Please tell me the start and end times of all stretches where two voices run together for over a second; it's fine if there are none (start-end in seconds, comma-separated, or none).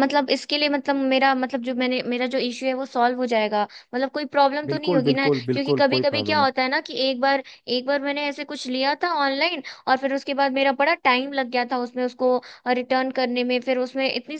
4.7-6.5